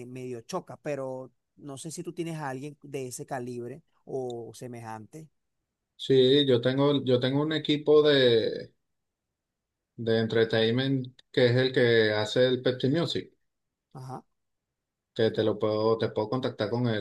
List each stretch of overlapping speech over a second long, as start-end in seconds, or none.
none